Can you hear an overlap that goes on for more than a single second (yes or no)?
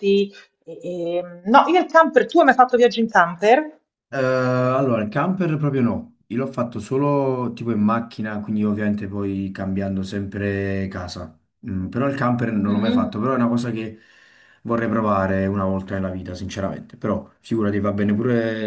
no